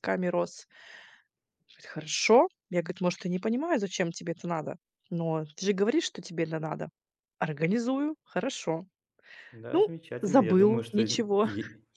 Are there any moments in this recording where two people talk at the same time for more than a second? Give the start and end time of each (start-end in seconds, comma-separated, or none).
9.7-11.1